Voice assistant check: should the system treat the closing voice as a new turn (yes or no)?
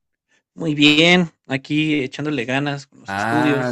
yes